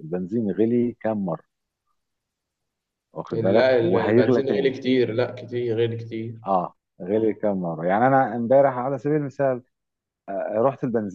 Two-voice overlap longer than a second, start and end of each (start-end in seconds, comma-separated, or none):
3.3-4.7